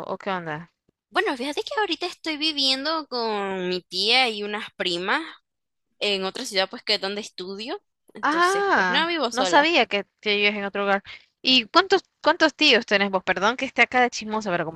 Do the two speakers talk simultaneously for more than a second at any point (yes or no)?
yes